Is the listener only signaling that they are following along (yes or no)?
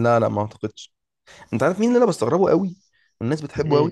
yes